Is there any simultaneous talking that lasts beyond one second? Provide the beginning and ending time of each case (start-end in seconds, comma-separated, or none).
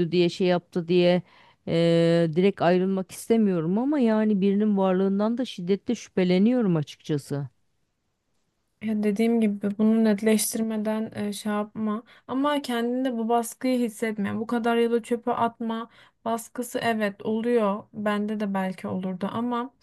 none